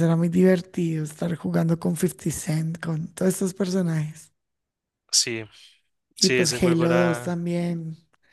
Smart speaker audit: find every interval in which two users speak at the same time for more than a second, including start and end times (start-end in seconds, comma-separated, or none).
6.2-7.4